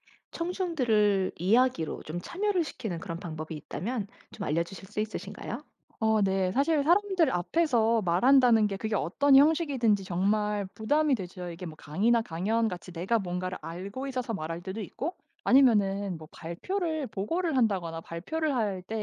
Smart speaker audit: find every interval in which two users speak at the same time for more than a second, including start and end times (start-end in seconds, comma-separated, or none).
none